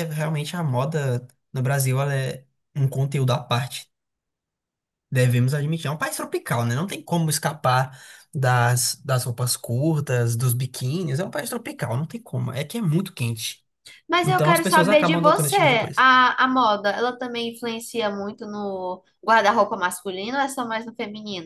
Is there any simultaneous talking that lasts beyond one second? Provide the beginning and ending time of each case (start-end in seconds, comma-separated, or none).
14.2-16.0